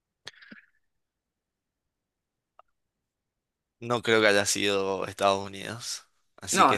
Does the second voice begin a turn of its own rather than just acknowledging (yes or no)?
no